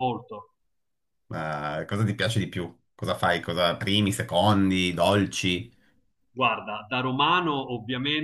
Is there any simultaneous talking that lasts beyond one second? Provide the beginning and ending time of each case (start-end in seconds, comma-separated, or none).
none